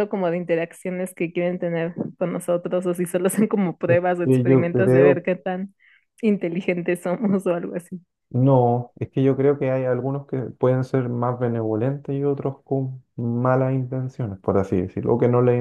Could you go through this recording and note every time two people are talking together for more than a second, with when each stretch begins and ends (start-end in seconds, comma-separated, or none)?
3.9-5.2